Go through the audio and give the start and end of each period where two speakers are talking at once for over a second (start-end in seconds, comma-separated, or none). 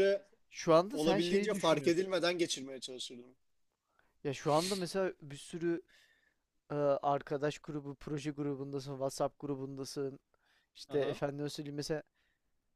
0.9-2.1